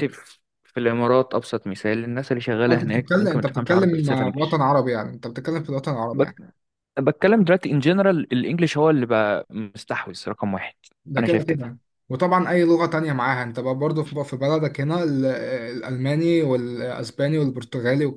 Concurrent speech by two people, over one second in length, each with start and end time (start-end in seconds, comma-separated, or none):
2.7-4.6